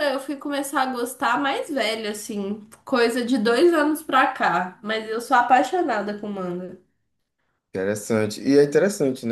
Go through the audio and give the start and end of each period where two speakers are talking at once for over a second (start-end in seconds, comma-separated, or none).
none